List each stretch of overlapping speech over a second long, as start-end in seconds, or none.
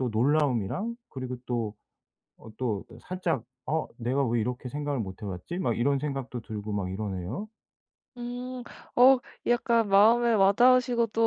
none